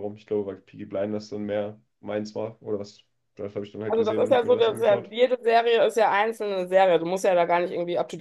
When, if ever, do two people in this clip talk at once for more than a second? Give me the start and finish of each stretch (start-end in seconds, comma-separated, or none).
3.9-5.1